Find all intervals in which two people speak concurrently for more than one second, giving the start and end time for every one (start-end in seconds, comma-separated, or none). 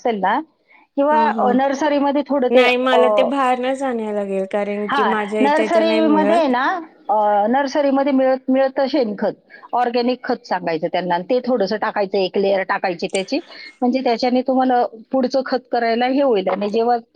4.9-6.4